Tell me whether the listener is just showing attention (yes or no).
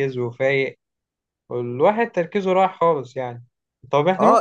yes